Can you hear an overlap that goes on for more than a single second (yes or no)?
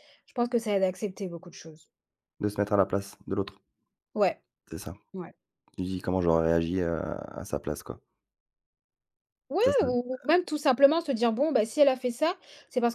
no